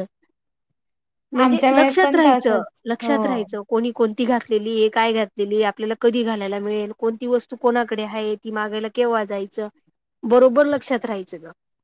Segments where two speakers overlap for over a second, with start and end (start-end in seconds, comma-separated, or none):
1.4-3.1